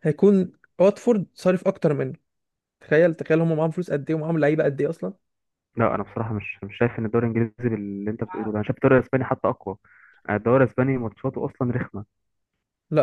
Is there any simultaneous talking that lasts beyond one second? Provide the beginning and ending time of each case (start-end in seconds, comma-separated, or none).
none